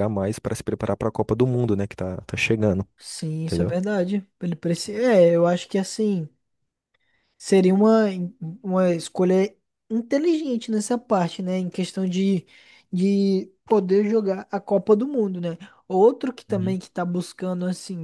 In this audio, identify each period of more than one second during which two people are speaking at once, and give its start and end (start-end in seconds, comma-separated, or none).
none